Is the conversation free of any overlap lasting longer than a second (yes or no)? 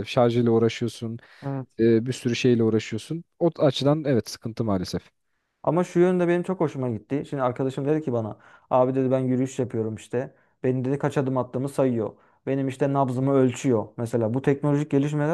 yes